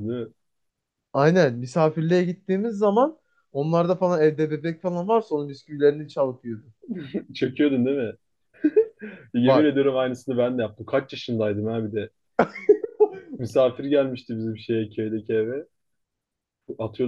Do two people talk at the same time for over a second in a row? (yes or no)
no